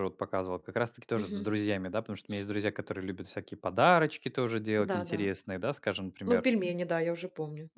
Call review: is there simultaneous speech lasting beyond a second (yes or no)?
no